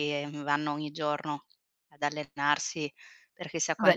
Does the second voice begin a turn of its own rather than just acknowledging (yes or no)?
yes